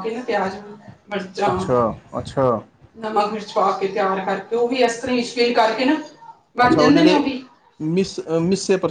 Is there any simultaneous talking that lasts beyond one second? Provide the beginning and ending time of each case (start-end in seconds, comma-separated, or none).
none